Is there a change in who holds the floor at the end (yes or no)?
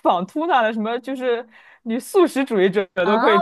yes